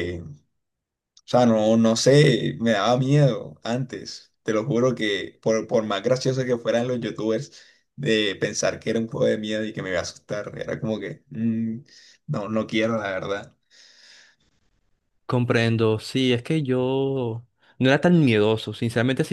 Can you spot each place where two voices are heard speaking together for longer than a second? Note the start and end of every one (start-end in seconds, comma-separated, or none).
none